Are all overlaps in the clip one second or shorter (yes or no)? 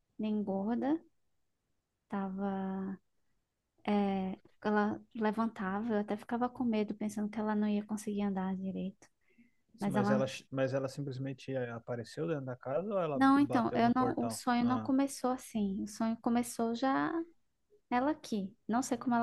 no